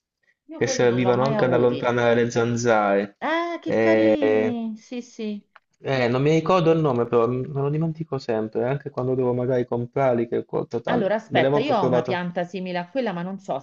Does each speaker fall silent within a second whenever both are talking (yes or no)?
no